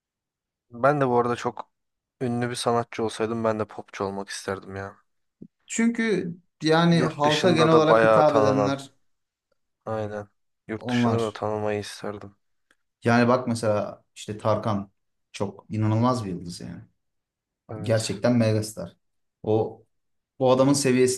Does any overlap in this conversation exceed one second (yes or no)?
yes